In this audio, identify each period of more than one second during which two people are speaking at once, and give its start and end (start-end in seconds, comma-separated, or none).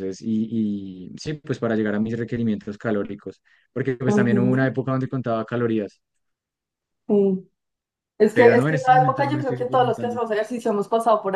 8.3-10.2